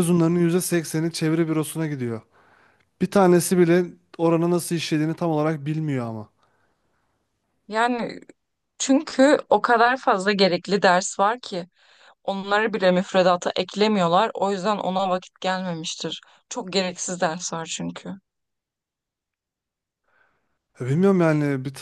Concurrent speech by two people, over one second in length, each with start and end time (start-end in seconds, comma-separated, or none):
none